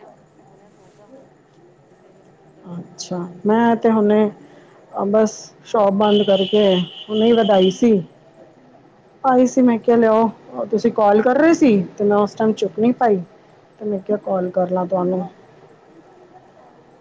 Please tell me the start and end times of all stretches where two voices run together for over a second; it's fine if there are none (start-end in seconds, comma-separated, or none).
none